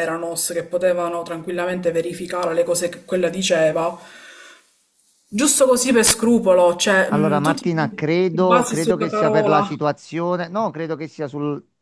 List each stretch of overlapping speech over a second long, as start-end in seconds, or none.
7.1-9.7